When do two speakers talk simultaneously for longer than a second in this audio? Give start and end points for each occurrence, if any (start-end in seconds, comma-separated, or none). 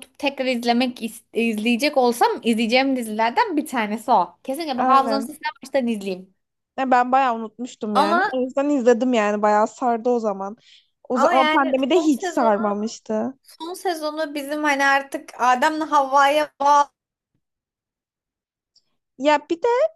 11.1-12.7